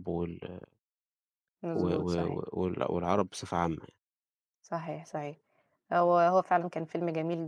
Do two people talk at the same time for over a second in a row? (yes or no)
no